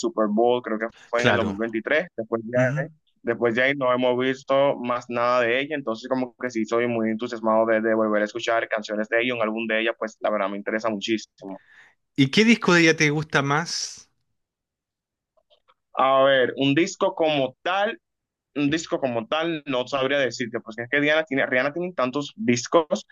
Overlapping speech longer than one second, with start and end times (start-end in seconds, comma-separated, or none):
none